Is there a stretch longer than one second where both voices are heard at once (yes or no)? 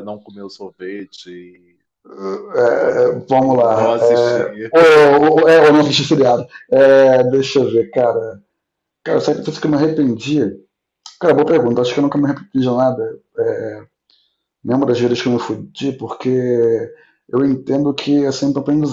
yes